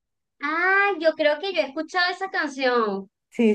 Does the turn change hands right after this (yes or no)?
no